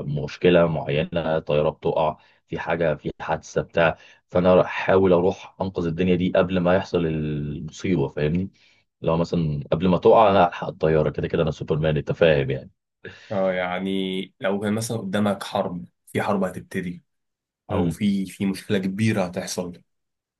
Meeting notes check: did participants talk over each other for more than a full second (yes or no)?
no